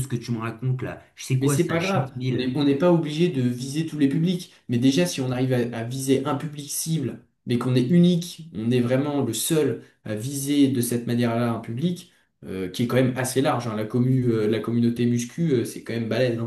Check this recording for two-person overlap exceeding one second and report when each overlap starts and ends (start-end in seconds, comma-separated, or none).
1.4-2.6